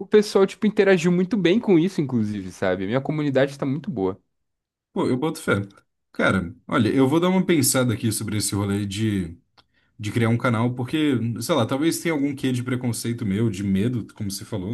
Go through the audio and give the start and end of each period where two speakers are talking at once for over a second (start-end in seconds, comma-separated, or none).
none